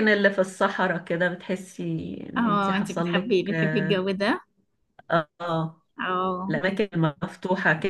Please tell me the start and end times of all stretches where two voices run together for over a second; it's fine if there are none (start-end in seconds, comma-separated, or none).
2.4-4.1